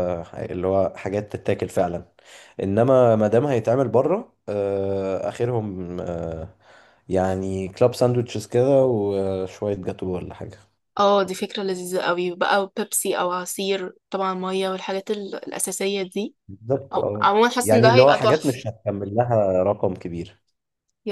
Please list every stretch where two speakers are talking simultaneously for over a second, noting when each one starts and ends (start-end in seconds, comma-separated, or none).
16.9-18.6